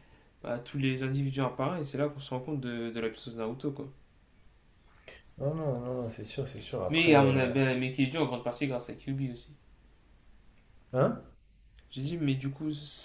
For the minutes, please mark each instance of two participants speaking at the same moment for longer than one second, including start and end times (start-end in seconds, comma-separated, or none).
none